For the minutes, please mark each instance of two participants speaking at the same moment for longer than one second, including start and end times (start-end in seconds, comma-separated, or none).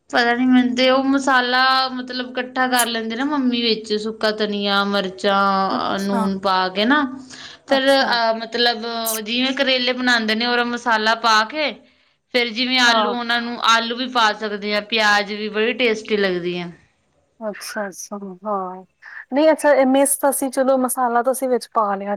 none